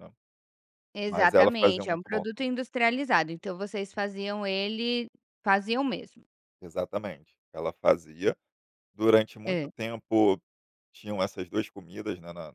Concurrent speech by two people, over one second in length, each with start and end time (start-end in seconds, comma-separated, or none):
1.1-2.5